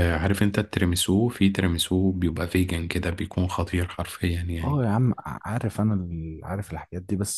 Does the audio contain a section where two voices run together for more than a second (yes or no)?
no